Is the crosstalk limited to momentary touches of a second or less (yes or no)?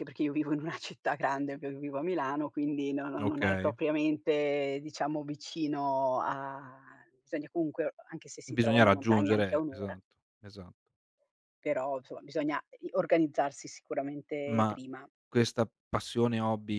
no